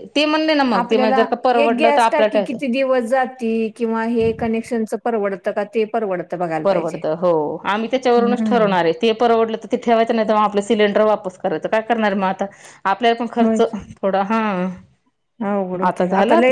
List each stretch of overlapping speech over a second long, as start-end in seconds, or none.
0.8-2.7